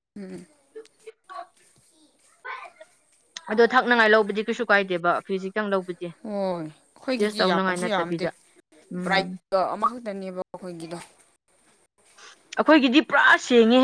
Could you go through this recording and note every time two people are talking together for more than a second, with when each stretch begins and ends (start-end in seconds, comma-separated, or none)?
6.2-7.5